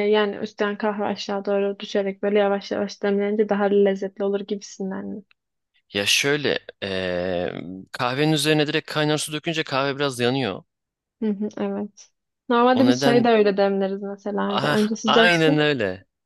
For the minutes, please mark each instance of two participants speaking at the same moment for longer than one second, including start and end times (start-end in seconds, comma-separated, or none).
14.5-15.7